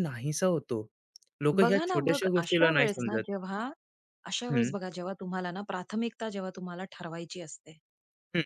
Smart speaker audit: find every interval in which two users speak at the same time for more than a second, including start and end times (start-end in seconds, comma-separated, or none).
1.6-3.2